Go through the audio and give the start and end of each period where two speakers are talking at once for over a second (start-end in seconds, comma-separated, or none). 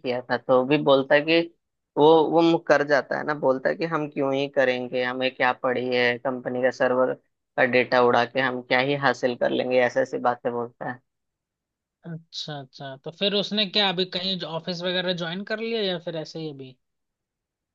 none